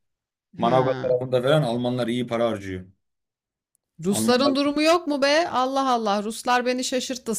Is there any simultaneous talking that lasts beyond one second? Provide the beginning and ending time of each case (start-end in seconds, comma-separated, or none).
none